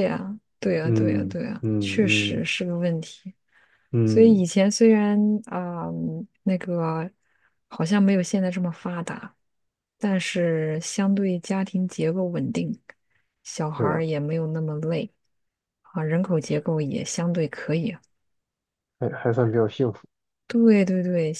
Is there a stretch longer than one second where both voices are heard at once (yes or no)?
yes